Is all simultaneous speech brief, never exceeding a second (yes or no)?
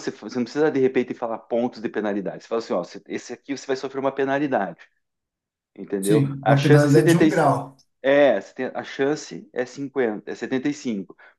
no